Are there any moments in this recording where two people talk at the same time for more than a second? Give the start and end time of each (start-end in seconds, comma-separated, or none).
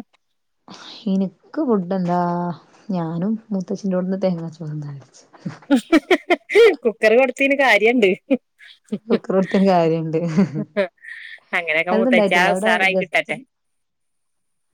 11.9-13.3